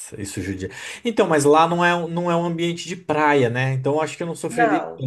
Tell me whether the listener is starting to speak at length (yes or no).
no